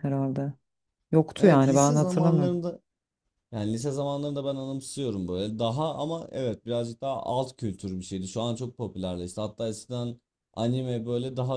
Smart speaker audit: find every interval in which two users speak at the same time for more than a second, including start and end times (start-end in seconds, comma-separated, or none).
1.4-2.6